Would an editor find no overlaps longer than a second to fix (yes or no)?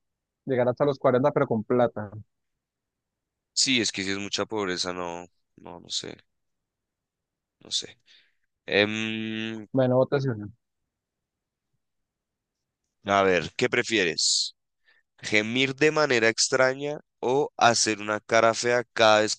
yes